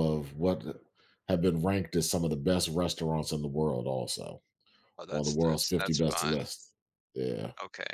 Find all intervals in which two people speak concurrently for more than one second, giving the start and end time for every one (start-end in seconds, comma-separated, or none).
5.1-6.5